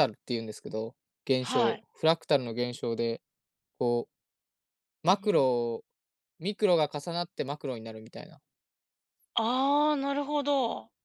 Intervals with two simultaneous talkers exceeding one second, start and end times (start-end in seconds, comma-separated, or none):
none